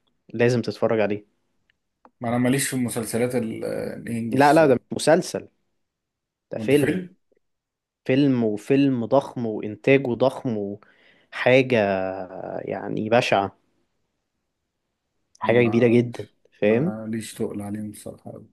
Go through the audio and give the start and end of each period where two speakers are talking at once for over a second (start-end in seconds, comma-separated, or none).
15.4-16.9